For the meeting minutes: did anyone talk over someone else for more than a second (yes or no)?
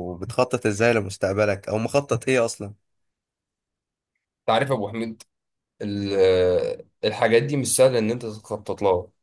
no